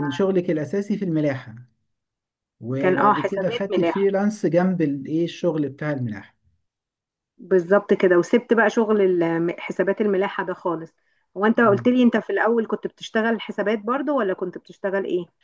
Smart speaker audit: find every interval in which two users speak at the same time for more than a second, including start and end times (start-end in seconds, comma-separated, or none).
2.8-4.1